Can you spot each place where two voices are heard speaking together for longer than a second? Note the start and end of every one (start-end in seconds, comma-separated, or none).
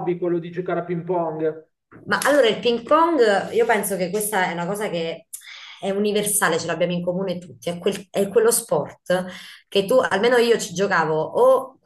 none